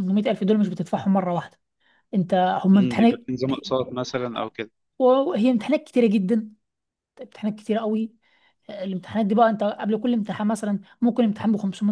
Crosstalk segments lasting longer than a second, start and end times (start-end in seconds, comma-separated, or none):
none